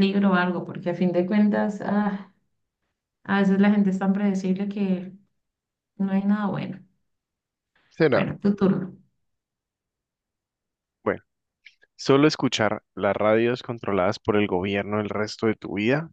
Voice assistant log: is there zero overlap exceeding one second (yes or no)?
yes